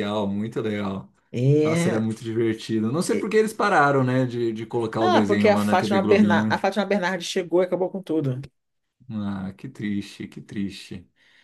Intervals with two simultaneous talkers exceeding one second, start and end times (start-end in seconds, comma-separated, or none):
5.0-6.6